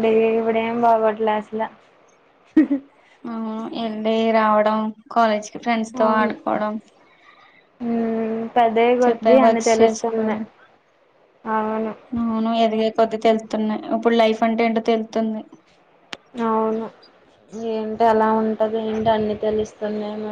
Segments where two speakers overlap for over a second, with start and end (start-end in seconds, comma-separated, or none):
9.0-10.4